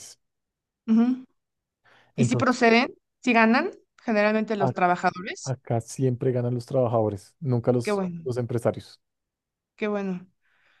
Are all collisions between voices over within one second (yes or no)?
yes